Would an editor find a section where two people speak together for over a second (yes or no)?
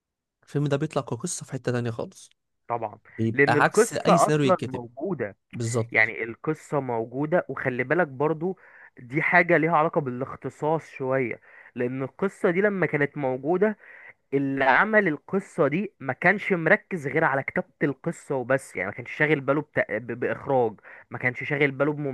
yes